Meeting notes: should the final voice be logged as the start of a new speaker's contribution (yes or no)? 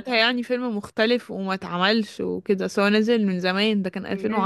yes